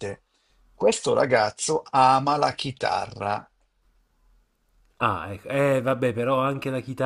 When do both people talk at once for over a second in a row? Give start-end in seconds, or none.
none